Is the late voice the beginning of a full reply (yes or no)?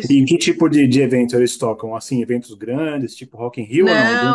yes